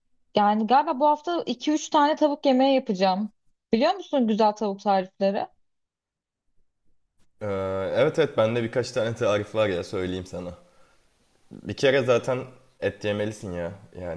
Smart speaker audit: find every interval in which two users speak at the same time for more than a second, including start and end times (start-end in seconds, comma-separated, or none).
none